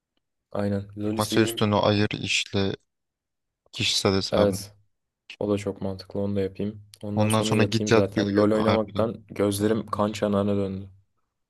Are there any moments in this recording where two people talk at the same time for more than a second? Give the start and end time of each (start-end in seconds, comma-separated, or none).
7.1-9.1